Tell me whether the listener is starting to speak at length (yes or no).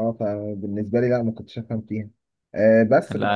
no